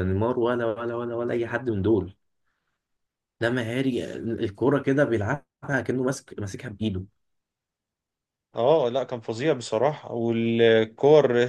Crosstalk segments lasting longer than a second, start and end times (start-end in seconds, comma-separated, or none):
none